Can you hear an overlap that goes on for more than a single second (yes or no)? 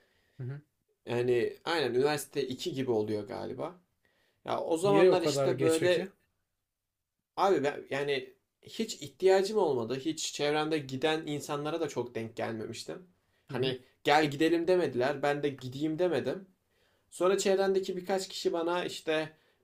yes